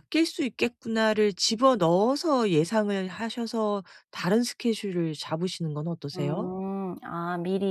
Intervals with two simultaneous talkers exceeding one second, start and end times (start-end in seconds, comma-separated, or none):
none